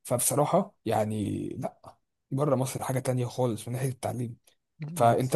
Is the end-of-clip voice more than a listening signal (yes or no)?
no